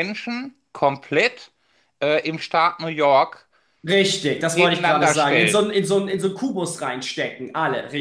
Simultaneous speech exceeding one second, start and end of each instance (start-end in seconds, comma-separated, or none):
4.5-5.8